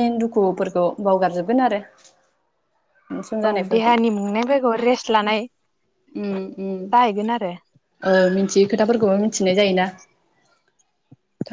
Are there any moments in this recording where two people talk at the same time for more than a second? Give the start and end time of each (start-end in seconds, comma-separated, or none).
none